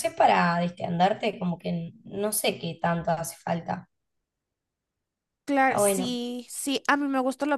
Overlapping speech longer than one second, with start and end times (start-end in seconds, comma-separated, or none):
none